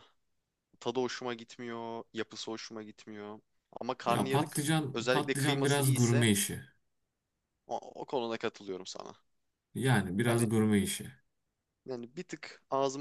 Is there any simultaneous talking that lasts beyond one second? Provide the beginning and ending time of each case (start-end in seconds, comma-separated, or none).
4.1-6.2